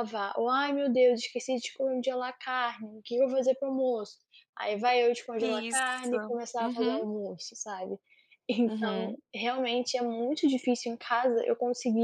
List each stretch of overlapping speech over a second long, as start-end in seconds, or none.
5.4-7.1